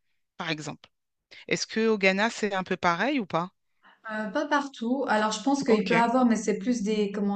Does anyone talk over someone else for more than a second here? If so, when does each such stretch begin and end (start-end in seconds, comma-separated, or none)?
none